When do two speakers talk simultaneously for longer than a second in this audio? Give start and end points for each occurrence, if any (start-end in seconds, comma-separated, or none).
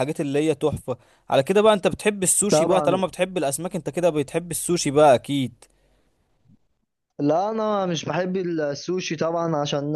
none